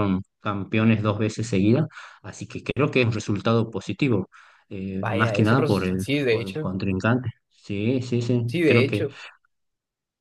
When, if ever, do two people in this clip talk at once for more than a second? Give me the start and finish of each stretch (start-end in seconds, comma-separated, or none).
5.0-6.8